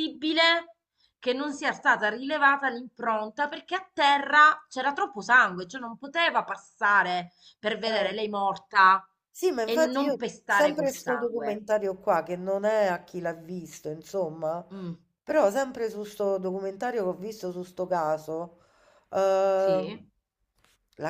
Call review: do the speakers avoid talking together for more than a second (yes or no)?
no